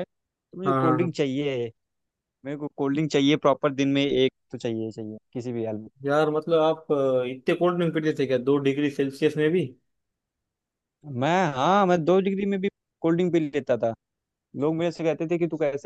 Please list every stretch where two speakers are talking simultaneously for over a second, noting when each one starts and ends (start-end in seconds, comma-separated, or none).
none